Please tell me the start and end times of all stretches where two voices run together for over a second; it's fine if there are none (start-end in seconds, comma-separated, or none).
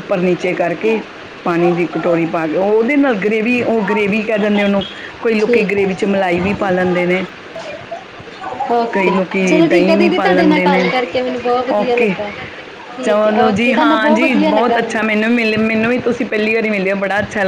8.9-10.8, 13.1-14.8